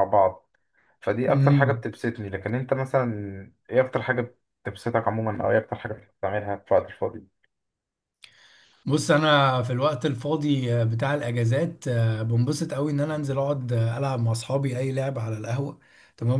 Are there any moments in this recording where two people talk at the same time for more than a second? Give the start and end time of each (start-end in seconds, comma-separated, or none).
none